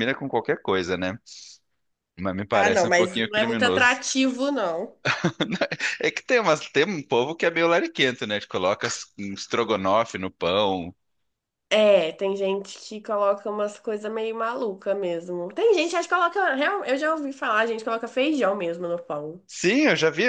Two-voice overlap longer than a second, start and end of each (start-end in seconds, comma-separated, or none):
2.5-4.0